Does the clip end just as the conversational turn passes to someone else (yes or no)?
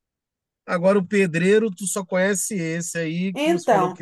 yes